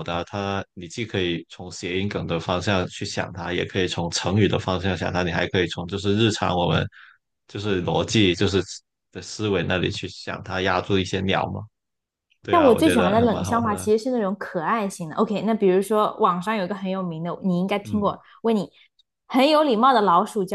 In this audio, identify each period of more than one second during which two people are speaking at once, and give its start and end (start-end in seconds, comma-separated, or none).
12.5-13.9